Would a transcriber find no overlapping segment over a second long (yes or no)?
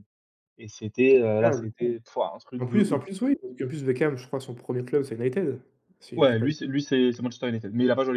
yes